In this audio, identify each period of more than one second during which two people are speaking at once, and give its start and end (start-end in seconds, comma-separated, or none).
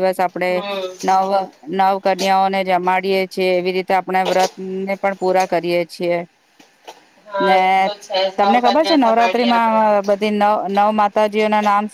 8.4-9.8